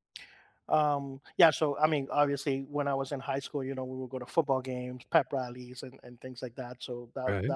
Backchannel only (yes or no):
yes